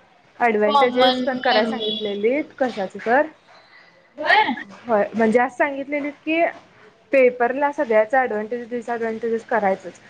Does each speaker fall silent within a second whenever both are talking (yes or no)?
no